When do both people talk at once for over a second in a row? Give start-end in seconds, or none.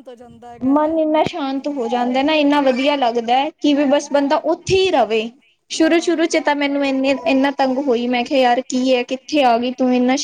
none